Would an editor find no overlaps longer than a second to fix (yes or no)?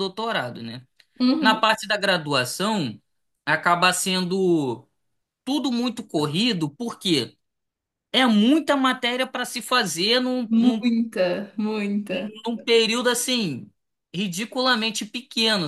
yes